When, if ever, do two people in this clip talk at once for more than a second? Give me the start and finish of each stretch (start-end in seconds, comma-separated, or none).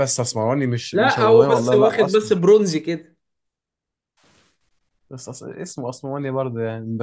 0.9-2.5